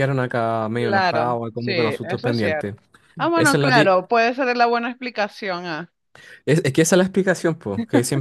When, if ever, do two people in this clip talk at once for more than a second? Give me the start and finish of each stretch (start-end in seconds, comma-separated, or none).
0.8-2.7